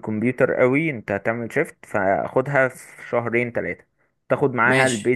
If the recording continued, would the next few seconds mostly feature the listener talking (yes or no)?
no